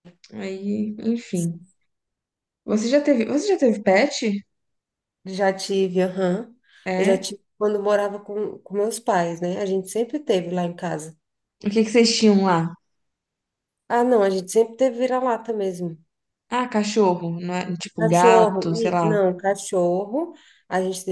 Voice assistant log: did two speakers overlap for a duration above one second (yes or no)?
yes